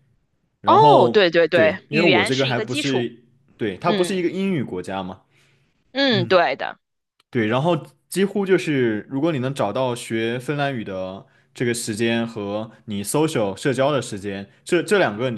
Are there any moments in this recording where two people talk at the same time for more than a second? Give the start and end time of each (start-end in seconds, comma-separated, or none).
0.6-3.1